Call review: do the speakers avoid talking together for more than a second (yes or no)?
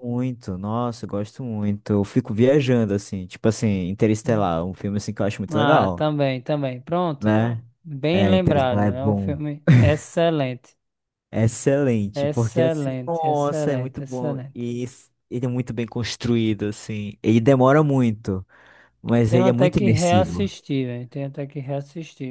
no